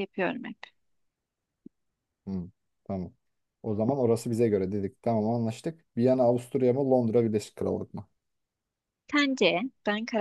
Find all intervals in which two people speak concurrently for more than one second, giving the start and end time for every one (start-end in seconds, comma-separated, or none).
none